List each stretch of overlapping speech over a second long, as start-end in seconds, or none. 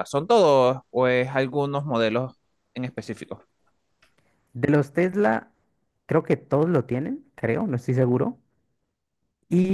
none